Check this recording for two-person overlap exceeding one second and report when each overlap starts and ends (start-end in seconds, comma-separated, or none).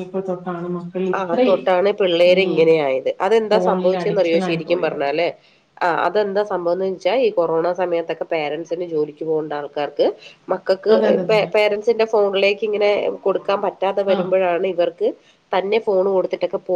3.5-5.0